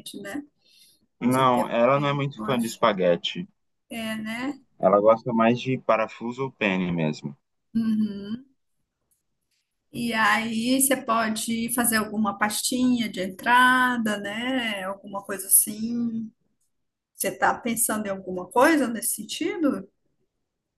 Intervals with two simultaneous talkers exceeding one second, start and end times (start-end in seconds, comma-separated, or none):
1.3-2.8